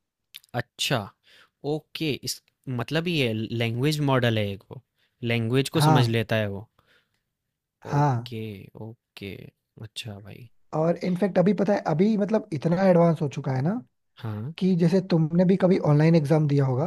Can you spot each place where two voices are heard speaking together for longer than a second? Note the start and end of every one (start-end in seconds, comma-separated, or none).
none